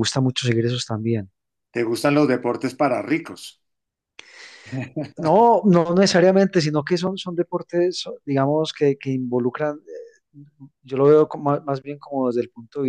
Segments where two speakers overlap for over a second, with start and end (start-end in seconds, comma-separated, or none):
none